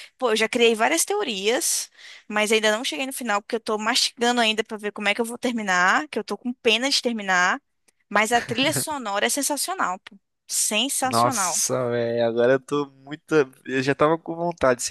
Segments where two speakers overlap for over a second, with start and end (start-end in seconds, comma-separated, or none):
none